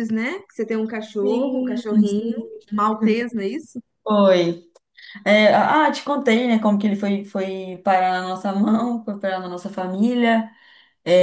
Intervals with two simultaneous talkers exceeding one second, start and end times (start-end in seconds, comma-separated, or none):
1.2-2.6